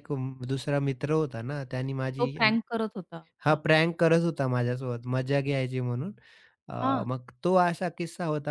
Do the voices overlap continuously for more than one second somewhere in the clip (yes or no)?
no